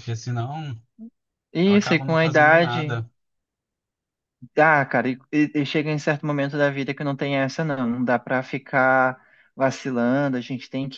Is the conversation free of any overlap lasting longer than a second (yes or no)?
no